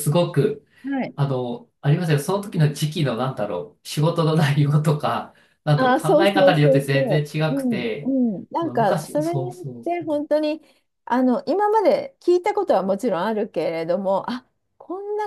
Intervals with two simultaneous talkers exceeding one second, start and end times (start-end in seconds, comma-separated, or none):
5.8-7.9, 8.6-10.2